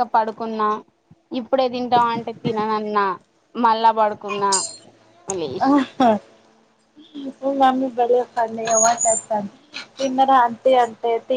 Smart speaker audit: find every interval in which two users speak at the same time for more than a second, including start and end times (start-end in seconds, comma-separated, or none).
none